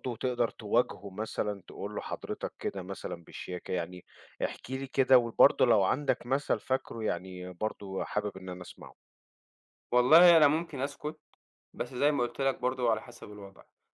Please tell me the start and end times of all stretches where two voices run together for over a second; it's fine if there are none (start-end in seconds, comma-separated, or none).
none